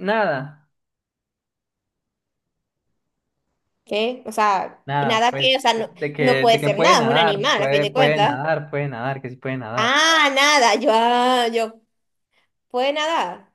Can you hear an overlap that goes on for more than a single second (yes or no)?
yes